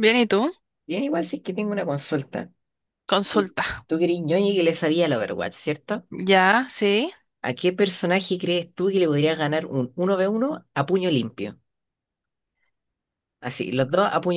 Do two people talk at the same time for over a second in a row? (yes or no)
no